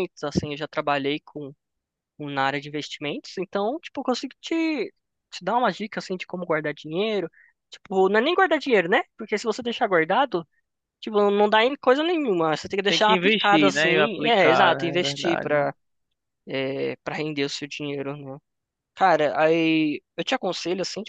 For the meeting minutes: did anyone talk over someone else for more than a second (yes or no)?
yes